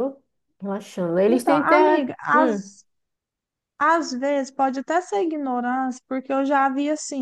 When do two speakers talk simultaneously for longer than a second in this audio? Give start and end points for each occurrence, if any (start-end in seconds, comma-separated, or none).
1.2-2.6